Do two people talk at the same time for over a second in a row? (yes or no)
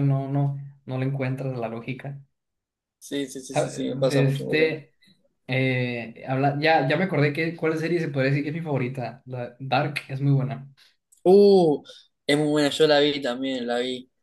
yes